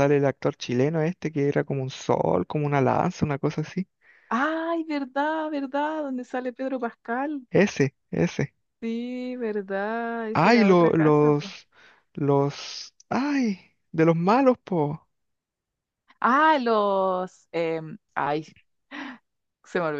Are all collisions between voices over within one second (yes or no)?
no